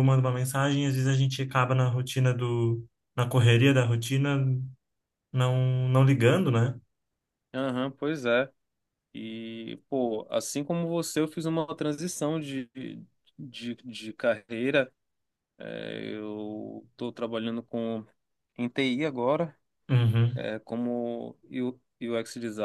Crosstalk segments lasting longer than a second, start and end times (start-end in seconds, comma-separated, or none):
none